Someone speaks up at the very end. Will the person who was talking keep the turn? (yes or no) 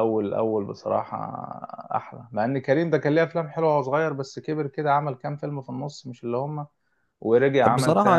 no